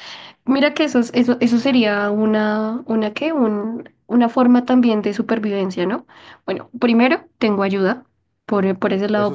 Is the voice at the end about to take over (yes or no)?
no